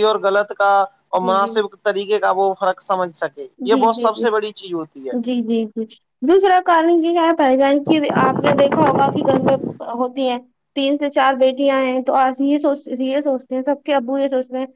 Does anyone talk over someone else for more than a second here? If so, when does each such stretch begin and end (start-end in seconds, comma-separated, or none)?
none